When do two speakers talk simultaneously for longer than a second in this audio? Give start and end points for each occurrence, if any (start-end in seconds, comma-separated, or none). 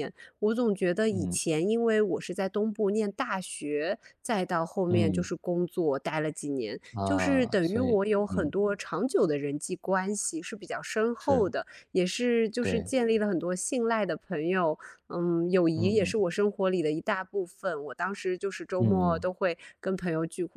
6.9-8.5